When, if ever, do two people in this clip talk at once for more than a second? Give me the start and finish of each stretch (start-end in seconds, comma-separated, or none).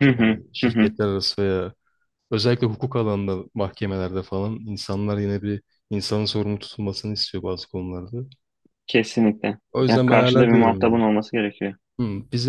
9.7-11.0